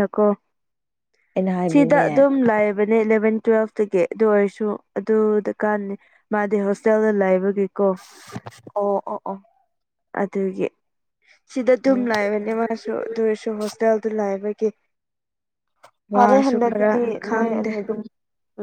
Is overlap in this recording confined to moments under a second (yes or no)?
no